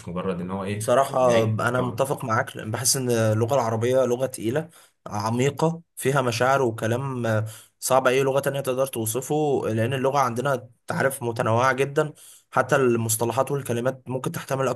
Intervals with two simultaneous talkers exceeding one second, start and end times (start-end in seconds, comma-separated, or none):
0.7-2.1